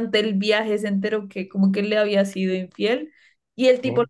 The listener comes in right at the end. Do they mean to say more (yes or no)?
no